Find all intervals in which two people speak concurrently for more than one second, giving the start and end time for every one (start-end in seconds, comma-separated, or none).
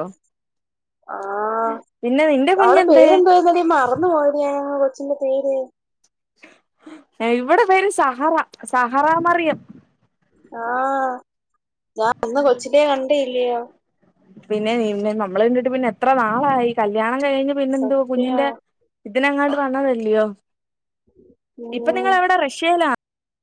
none